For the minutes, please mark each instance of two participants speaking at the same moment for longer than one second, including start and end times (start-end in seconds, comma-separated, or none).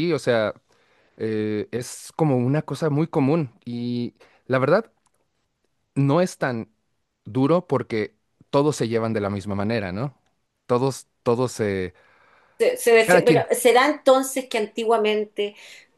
none